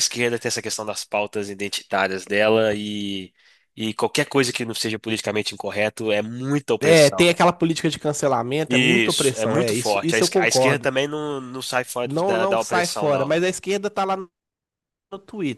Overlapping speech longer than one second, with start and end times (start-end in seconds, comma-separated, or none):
8.7-10.9, 12.0-13.4